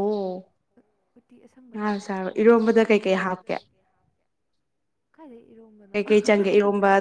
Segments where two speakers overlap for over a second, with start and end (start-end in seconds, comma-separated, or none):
1.7-3.5